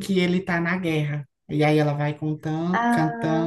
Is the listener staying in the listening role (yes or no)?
yes